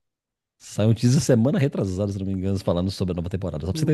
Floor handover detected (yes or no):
yes